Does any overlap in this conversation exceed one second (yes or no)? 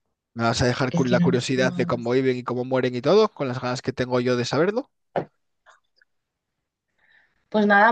yes